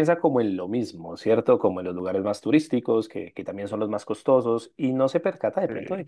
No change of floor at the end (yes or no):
yes